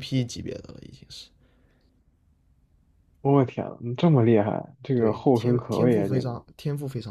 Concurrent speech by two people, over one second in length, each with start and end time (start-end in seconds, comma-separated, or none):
4.9-6.3